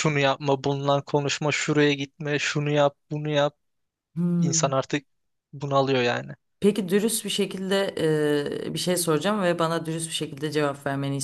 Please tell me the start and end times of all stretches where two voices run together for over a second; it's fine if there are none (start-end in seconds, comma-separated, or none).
none